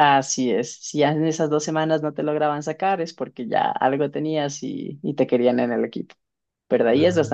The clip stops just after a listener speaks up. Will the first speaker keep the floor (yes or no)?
yes